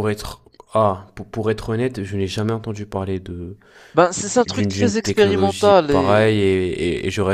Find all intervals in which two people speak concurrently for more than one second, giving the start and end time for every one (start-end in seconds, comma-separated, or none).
4.5-6.3